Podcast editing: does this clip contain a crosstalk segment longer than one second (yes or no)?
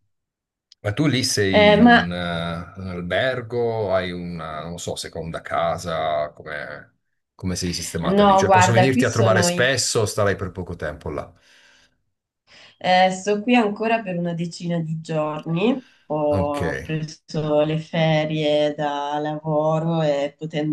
yes